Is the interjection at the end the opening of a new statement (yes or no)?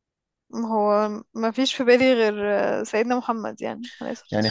yes